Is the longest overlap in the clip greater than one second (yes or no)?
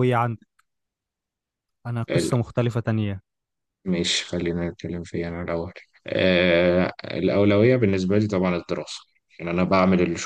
no